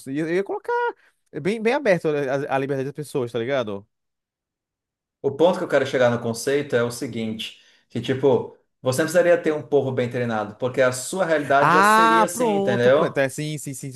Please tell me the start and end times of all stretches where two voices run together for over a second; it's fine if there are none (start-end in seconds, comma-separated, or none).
11.6-13.2